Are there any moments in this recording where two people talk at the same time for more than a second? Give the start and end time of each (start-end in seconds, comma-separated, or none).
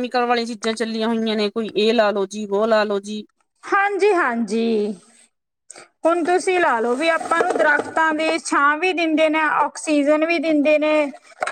none